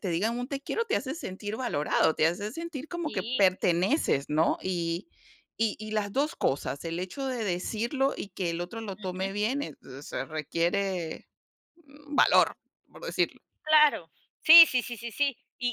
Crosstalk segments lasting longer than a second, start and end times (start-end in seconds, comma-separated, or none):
none